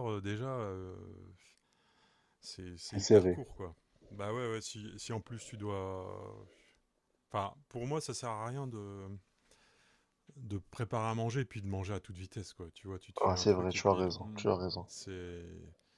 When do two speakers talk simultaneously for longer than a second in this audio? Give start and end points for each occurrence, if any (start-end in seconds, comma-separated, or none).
13.2-14.9